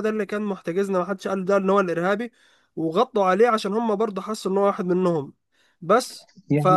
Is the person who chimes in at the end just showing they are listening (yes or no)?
no